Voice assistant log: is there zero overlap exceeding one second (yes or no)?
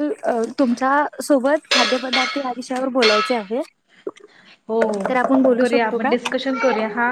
yes